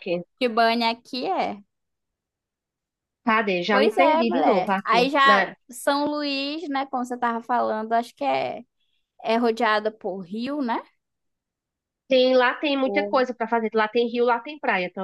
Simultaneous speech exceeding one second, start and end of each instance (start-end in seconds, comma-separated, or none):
3.7-5.5